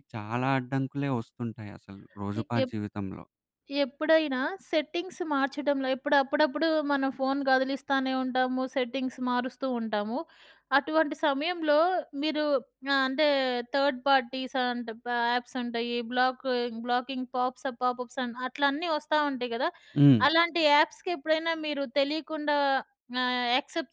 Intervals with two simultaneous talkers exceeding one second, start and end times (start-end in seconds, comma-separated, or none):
none